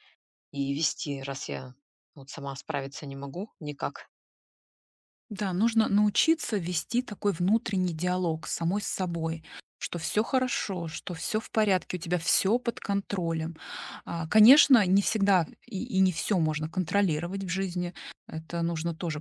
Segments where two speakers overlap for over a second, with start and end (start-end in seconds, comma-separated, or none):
none